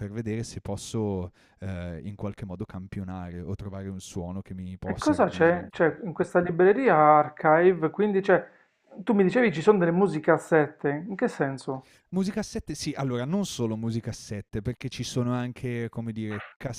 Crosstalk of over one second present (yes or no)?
yes